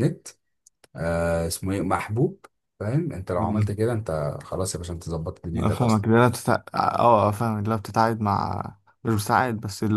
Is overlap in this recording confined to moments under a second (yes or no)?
yes